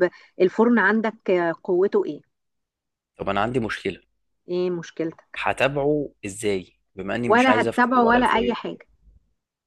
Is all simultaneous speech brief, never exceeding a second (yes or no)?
no